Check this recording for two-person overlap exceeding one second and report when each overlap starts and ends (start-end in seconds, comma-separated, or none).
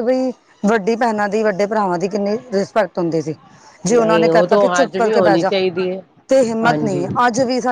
4.0-5.5